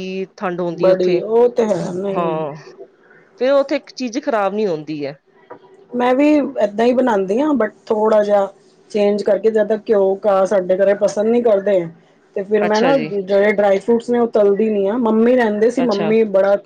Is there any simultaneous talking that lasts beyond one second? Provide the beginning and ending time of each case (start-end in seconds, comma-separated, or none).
none